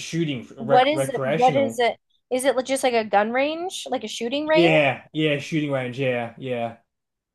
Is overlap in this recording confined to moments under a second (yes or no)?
no